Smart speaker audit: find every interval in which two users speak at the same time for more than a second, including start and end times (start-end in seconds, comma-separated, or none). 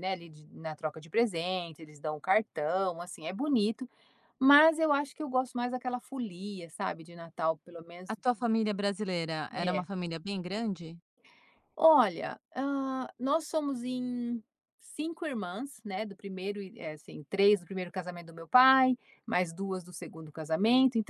none